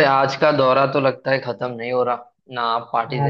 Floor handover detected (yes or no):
no